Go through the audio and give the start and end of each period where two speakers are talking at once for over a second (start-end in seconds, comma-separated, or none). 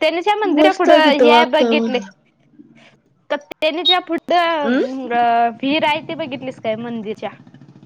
0.6-2.0